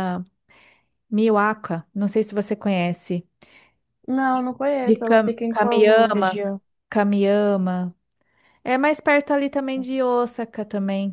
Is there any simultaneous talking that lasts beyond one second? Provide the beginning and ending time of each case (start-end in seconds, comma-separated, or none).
4.8-6.4